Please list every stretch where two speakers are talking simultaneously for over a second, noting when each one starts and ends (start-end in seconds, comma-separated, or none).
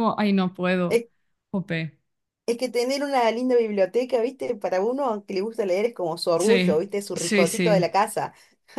6.3-7.8